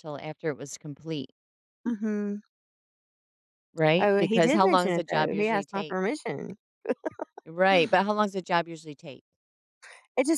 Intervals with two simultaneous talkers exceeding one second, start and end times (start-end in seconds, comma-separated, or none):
4.0-6.0